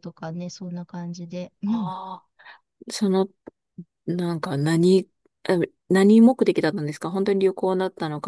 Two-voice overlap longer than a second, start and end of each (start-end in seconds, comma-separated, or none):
none